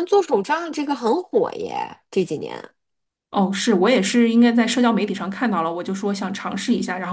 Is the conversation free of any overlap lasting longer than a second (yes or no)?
yes